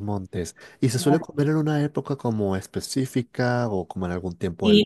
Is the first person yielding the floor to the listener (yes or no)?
yes